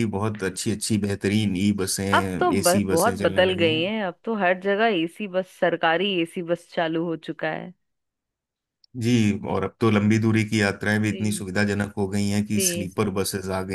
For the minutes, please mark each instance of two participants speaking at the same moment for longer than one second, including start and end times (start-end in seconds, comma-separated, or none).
2.6-3.9